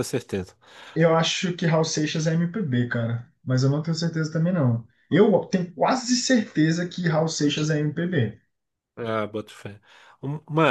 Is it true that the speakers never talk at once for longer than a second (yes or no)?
yes